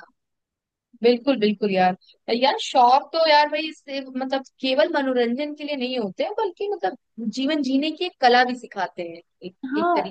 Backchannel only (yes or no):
no